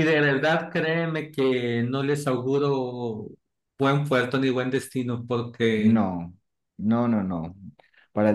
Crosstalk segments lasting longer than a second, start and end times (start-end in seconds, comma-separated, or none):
none